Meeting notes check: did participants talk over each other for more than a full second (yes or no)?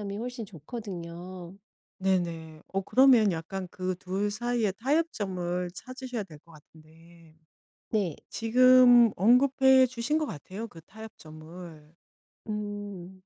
no